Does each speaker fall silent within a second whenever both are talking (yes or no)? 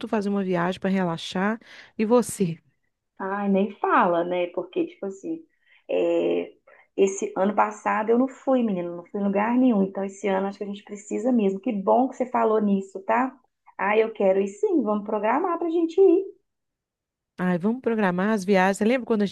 yes